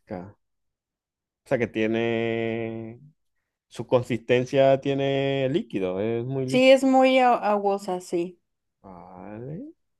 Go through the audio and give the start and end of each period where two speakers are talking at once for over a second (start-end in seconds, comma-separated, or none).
none